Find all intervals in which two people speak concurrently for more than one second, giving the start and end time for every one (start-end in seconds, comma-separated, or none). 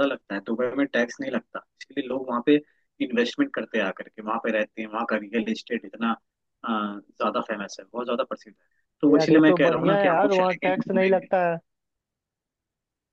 9.1-11.3